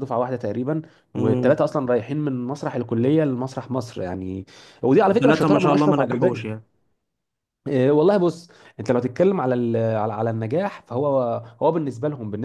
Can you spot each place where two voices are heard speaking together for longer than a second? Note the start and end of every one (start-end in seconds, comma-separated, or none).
5.1-6.4